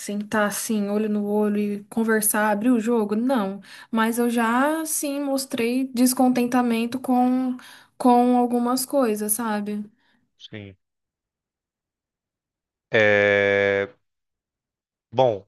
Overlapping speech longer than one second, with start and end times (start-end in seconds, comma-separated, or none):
none